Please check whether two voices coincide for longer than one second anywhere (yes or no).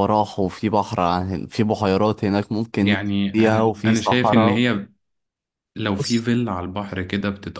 yes